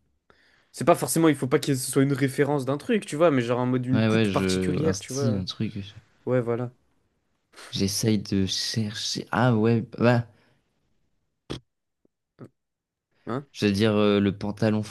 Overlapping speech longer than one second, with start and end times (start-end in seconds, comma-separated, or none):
3.9-5.4